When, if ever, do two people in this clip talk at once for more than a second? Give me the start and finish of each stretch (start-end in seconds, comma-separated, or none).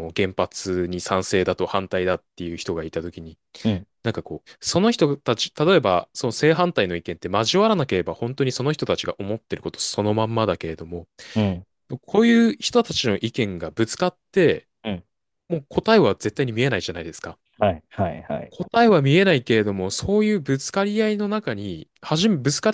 none